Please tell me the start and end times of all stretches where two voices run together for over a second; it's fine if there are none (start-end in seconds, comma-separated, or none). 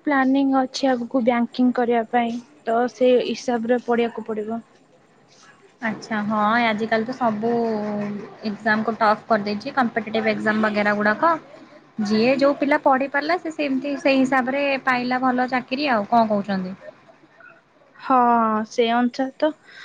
none